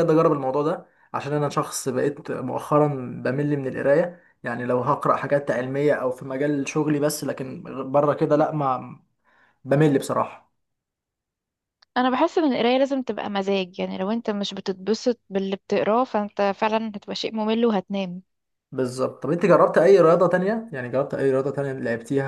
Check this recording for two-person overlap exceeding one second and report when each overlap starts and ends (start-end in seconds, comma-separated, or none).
none